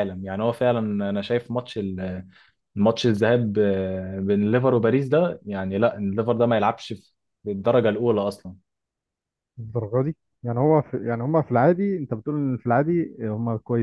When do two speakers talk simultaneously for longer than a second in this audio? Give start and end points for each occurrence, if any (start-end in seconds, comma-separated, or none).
none